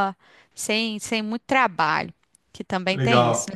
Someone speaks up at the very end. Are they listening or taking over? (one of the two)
taking over